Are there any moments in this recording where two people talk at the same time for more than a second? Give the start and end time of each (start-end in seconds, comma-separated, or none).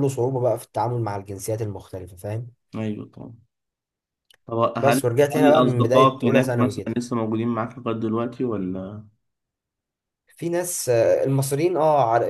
4.8-7.0